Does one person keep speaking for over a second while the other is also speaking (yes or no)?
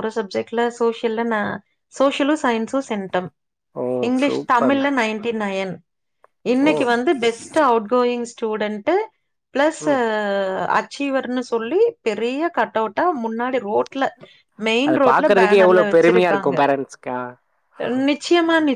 yes